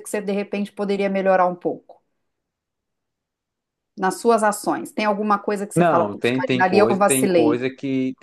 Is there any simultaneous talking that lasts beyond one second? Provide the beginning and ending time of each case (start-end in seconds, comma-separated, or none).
5.8-7.7